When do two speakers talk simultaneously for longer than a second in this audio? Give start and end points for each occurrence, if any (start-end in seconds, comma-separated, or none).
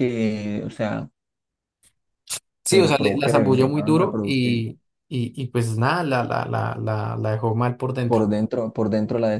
2.7-4.7